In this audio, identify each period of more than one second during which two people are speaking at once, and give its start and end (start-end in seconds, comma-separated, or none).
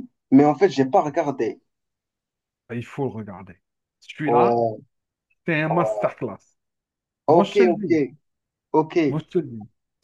none